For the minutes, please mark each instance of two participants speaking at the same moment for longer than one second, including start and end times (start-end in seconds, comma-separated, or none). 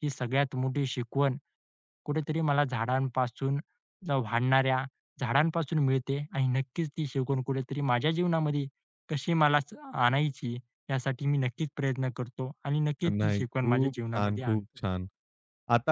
13.1-14.8